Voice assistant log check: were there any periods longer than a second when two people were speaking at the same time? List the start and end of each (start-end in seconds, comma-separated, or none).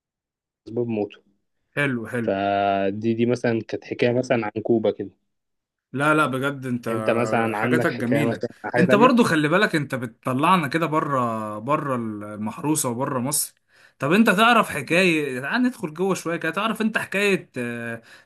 7.5-9.1